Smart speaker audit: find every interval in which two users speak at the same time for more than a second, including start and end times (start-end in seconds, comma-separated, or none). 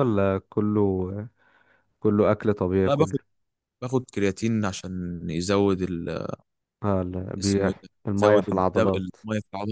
7.4-9.2